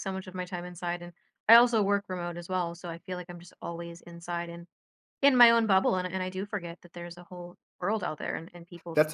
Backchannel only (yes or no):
no